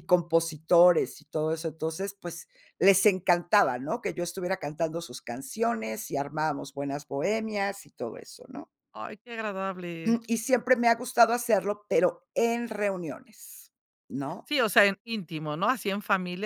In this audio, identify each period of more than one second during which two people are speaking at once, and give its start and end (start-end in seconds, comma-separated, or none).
none